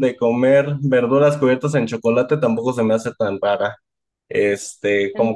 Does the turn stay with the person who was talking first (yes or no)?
yes